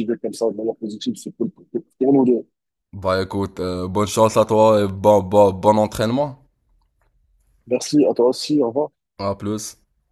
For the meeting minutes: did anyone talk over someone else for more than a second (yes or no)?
no